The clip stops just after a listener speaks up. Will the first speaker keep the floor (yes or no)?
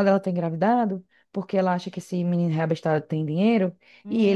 yes